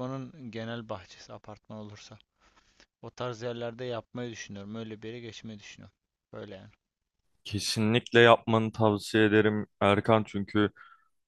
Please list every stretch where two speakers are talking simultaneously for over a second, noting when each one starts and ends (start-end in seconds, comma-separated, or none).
none